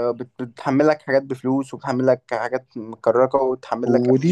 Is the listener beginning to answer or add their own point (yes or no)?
yes